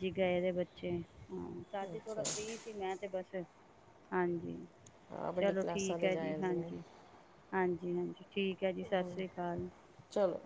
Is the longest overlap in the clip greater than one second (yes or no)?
yes